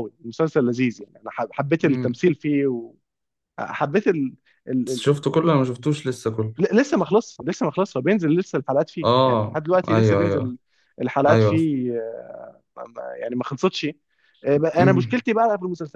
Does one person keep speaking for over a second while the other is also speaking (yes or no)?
yes